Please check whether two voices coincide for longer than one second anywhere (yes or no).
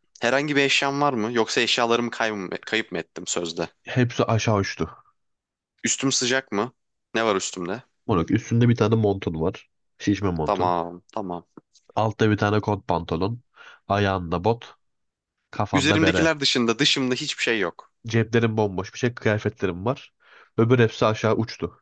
no